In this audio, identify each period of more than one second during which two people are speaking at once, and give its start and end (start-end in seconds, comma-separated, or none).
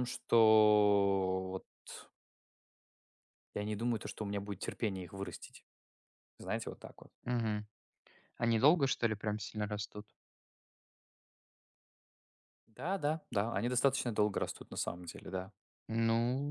none